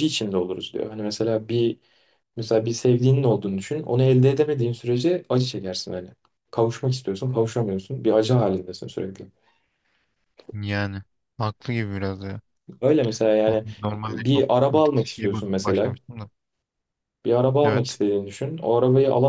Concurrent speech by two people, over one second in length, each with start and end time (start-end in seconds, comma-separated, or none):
14.1-16.0